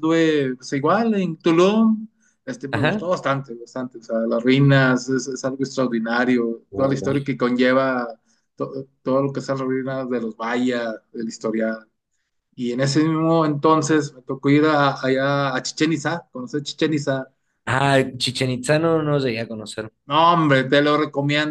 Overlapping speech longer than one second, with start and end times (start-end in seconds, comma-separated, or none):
none